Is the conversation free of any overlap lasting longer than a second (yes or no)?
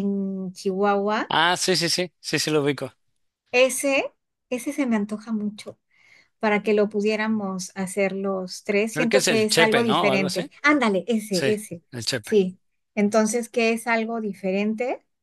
no